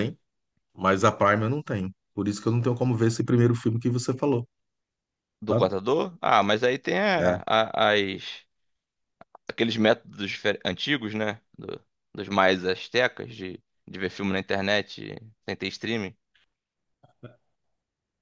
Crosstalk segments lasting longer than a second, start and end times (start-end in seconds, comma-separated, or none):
none